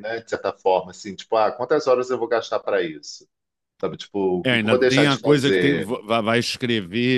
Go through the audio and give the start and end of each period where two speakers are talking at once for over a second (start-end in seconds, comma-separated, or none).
4.4-5.9